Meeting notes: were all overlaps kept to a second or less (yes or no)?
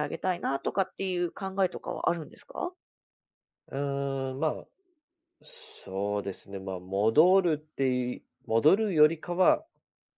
yes